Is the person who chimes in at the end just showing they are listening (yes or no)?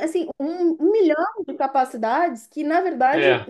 yes